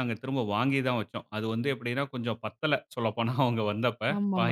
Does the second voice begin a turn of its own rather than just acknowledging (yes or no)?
yes